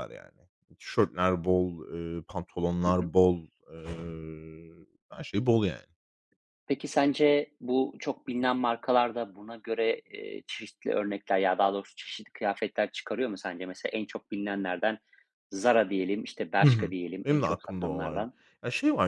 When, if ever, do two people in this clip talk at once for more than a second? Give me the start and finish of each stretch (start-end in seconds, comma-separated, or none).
16.6-18.3